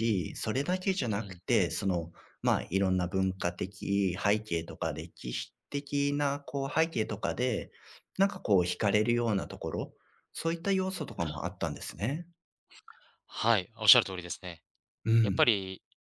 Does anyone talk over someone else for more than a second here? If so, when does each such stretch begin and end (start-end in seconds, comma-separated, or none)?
none